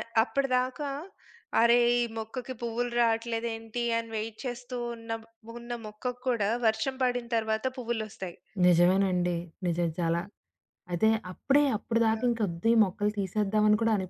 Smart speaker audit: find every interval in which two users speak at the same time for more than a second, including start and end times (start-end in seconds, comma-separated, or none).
none